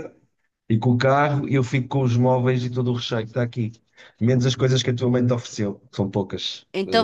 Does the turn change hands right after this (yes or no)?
yes